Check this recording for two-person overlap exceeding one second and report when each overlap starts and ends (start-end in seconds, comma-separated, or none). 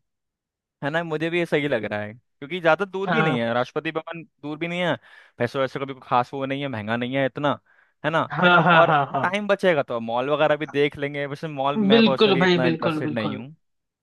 11.9-13.4